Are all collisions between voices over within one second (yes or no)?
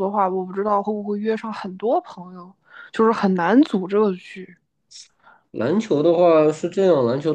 yes